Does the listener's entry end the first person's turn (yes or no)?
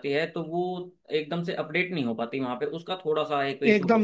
yes